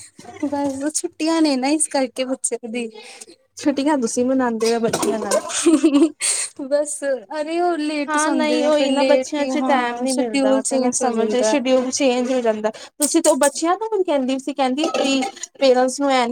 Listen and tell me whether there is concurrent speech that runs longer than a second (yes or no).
yes